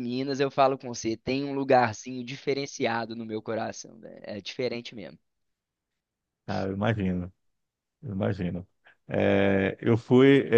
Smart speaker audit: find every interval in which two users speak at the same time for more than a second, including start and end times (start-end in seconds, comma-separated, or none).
none